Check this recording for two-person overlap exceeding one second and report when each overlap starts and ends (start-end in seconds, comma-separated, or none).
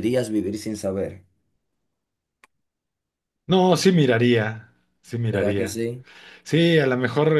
none